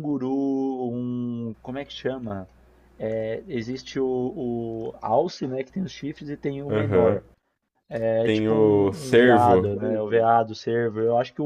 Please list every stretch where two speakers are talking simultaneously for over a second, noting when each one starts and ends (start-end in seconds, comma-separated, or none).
8.2-9.7